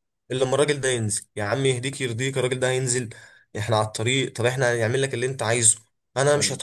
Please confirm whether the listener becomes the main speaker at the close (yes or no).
no